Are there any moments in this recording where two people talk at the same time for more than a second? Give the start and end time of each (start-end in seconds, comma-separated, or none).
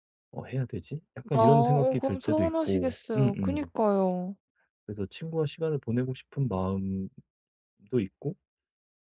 1.3-3.7